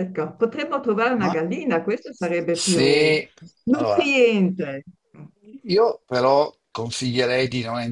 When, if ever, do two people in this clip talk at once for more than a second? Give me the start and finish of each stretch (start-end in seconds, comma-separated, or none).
none